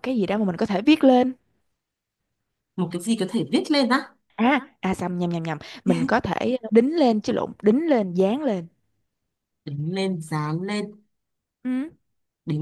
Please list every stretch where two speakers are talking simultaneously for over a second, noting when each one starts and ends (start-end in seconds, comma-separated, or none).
none